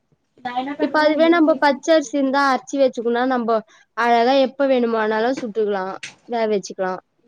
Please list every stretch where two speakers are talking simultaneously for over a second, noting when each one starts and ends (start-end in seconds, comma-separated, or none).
0.8-2.4